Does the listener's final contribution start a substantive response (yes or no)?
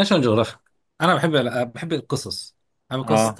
no